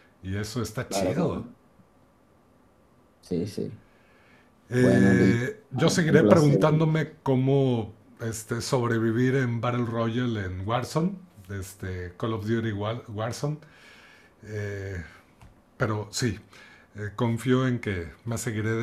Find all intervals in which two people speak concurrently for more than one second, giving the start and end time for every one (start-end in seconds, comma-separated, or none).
4.8-6.6